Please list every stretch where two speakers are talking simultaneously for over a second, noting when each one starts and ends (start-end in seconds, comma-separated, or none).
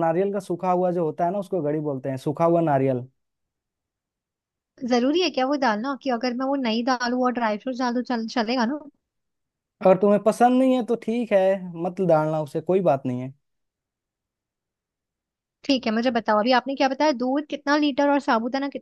none